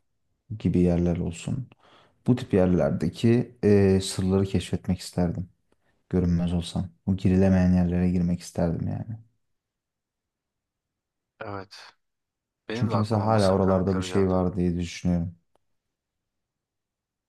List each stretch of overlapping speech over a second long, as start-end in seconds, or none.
12.7-14.3